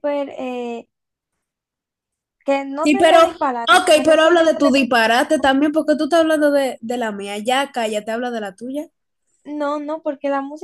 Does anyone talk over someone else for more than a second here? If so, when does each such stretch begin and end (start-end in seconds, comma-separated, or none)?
2.8-4.7